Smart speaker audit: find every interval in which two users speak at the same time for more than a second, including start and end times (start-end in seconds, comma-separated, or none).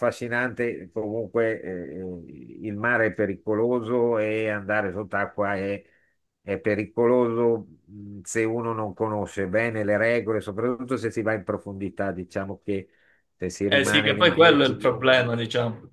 13.7-15.3